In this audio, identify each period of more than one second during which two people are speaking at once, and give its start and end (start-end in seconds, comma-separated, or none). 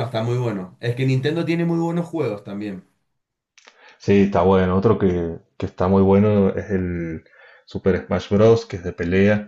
none